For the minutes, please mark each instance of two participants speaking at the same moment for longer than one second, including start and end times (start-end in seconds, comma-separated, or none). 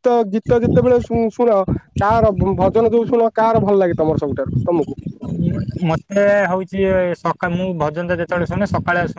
none